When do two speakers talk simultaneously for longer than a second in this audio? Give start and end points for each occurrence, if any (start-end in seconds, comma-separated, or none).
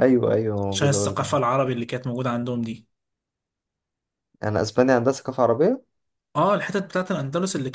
none